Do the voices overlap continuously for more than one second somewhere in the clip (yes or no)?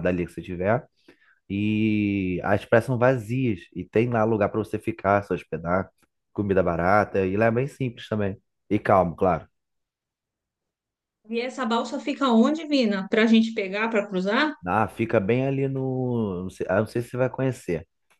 no